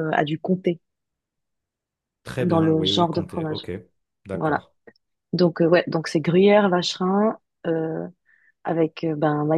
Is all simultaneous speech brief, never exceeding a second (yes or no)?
no